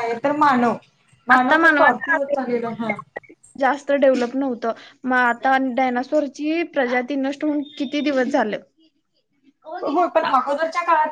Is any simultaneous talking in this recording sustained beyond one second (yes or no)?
yes